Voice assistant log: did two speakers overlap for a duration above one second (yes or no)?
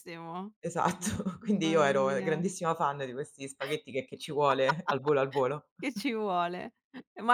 yes